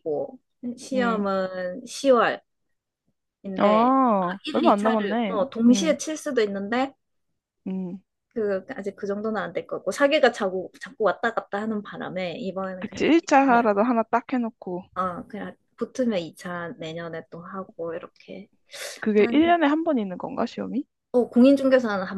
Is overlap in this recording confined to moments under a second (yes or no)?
no